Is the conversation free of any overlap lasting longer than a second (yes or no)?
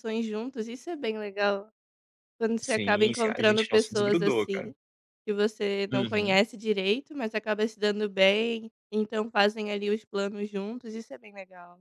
no